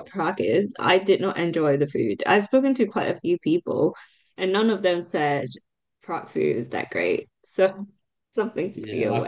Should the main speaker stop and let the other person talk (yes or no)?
yes